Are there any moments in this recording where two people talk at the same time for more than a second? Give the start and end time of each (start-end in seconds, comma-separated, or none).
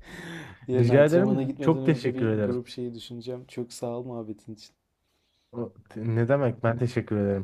0.7-2.6